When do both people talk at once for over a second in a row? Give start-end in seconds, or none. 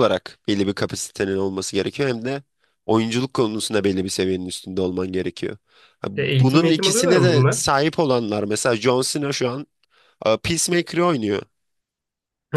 6.2-7.7